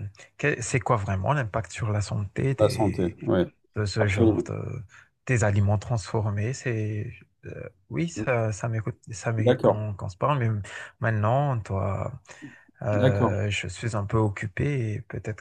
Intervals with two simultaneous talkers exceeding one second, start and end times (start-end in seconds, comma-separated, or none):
none